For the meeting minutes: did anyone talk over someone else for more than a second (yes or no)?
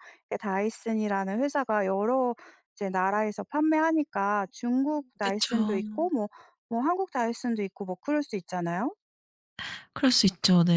yes